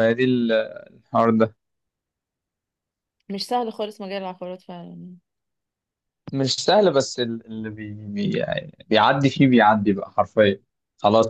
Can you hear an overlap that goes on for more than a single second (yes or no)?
no